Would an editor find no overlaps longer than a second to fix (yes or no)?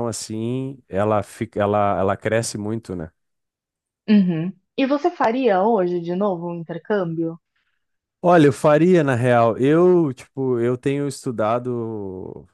yes